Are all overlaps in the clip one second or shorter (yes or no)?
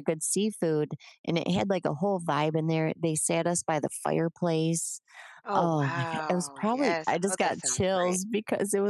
no